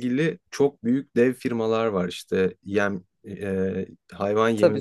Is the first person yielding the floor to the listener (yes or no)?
no